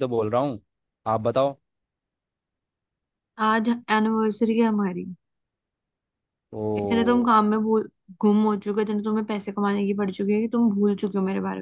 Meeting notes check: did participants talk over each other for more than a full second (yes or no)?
no